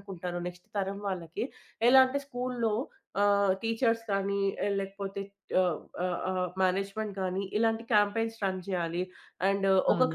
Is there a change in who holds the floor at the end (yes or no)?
yes